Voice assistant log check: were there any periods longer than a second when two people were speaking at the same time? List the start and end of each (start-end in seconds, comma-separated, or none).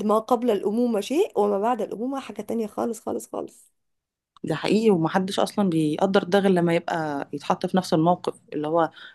none